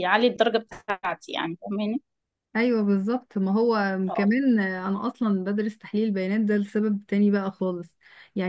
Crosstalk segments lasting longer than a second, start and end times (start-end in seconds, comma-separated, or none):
none